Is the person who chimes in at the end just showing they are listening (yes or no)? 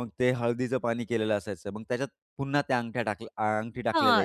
no